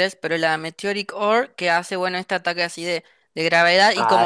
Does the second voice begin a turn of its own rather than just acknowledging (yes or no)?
no